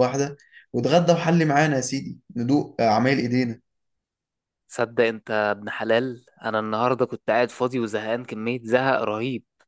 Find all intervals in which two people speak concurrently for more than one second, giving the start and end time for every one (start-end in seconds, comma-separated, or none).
none